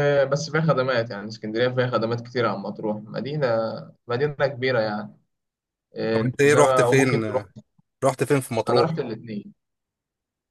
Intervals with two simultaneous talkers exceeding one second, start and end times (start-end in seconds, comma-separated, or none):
6.1-7.5